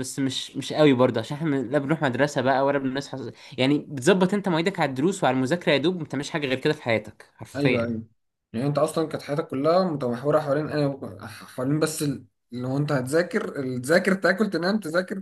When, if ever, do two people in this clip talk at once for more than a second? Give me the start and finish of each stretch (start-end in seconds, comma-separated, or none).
none